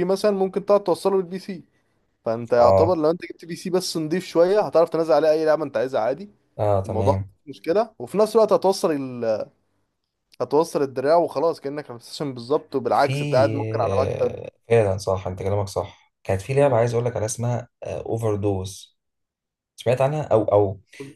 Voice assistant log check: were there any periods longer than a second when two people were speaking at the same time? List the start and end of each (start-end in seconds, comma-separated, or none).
none